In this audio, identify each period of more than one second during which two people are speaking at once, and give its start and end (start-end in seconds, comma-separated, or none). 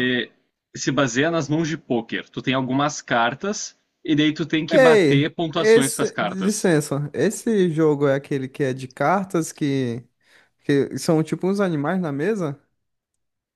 4.7-6.7